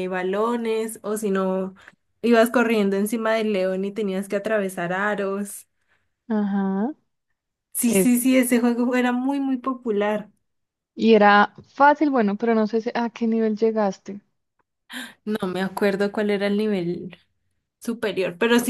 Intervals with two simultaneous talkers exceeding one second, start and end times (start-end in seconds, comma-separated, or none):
none